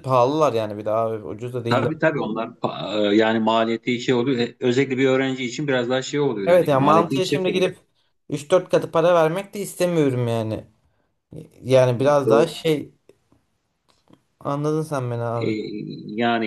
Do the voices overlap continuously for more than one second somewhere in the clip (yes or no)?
yes